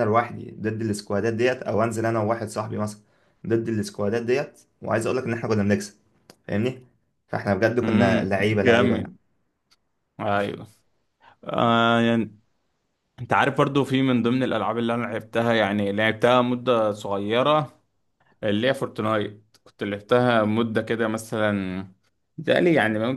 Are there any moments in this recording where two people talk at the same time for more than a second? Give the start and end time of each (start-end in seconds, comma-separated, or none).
7.8-9.1